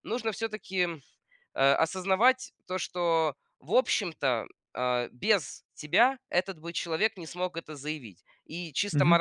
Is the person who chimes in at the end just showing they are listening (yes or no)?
yes